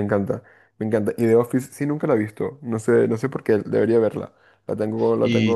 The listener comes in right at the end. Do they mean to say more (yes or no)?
yes